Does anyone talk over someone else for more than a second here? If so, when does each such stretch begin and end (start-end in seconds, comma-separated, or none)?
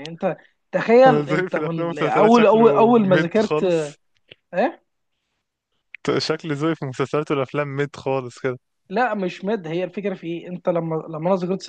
1.1-3.6